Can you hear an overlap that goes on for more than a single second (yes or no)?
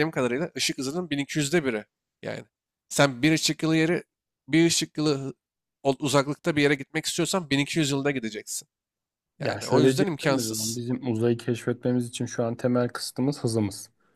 yes